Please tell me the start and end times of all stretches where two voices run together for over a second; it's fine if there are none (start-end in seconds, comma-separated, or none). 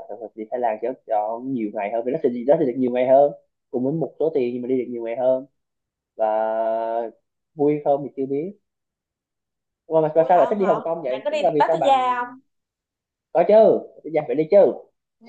10.2-12.0